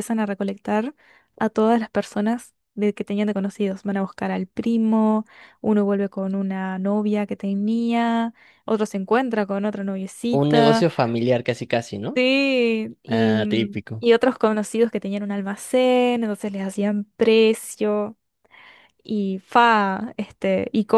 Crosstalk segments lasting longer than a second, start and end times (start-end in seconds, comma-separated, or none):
none